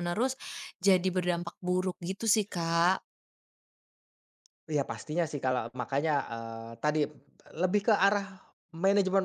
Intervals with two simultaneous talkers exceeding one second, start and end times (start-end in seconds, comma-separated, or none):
none